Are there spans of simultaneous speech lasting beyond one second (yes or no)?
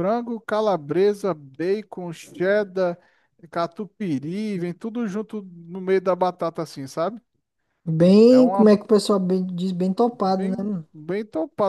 no